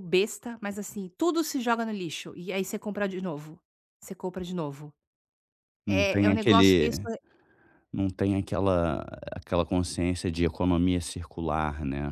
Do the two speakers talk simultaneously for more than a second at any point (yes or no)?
yes